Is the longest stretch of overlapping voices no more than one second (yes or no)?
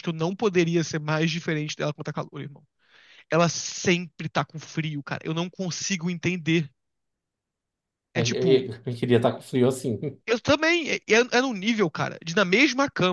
yes